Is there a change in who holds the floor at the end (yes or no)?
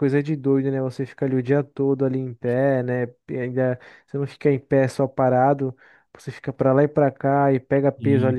no